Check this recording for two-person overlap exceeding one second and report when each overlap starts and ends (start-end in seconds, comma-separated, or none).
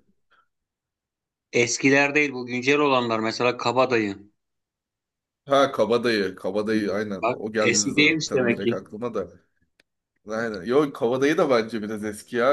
7.2-8.8